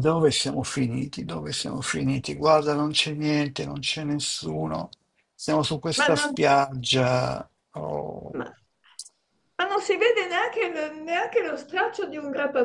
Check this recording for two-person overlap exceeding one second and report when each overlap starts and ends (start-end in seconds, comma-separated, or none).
none